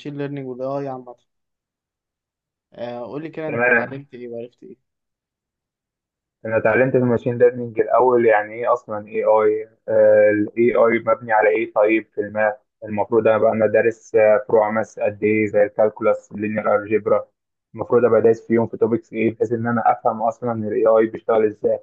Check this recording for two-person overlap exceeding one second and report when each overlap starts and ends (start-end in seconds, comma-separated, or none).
none